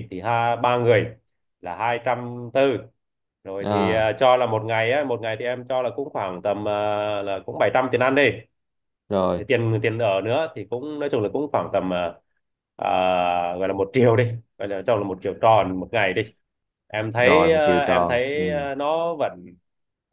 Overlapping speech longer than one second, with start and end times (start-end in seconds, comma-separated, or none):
17.2-18.4